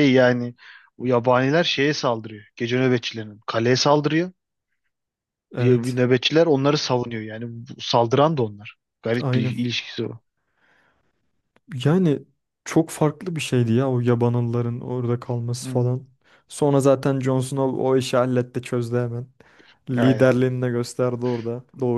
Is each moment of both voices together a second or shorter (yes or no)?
yes